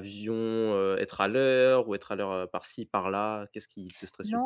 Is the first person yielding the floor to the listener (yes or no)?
yes